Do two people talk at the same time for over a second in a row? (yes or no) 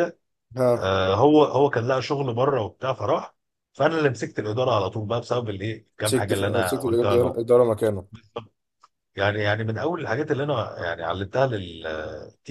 yes